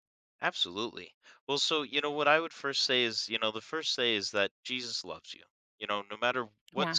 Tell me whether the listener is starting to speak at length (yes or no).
no